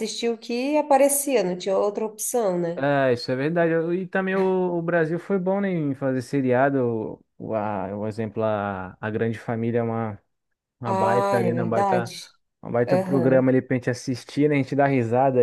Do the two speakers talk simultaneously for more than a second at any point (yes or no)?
yes